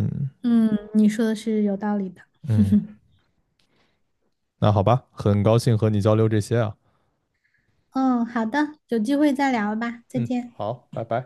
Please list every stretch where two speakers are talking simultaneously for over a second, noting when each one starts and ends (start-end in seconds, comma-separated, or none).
none